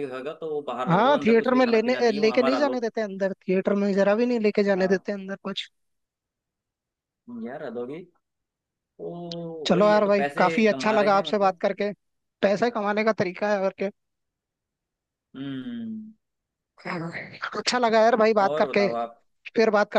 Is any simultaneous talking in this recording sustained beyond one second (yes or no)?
yes